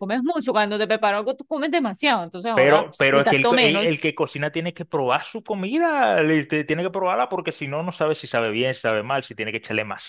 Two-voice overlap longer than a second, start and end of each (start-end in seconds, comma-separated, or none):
2.5-4.0